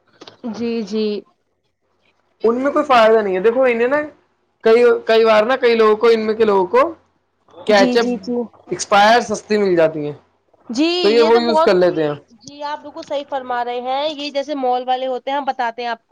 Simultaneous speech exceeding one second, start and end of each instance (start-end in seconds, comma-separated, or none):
none